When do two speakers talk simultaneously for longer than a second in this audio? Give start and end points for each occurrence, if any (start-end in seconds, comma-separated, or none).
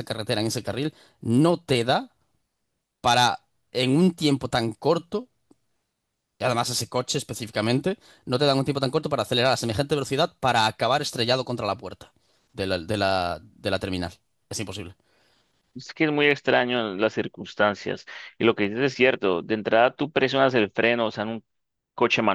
none